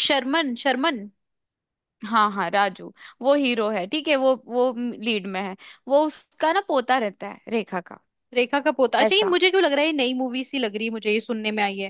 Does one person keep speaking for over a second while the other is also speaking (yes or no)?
no